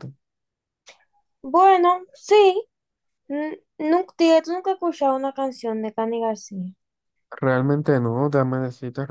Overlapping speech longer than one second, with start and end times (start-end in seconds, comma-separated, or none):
none